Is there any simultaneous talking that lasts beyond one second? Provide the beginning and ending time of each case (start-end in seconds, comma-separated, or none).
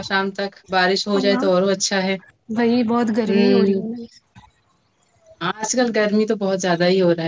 none